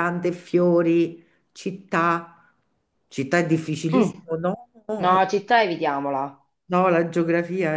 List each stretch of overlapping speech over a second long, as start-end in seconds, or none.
none